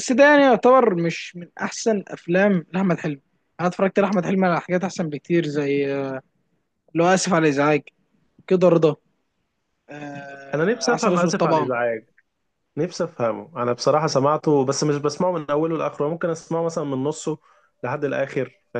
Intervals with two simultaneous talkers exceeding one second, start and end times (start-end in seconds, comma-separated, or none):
10.5-11.7